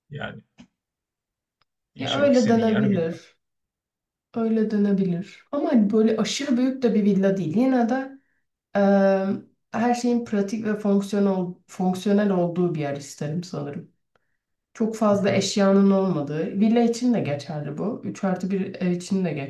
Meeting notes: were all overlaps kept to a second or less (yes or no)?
no